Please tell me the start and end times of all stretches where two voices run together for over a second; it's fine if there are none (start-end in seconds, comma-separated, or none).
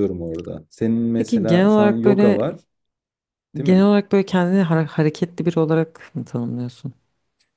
1.1-2.4